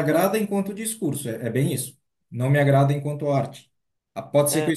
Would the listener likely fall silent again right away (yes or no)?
yes